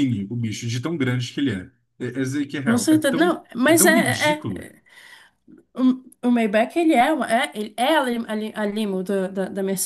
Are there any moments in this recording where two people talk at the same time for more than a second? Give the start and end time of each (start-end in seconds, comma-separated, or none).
2.6-4.7